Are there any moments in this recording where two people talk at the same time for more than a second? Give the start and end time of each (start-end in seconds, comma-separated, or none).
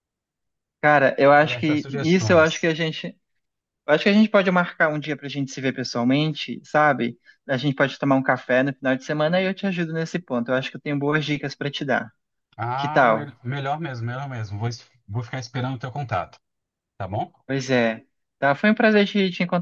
1.4-2.7